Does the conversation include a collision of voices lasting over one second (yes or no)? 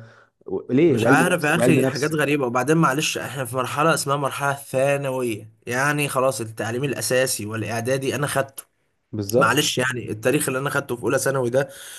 yes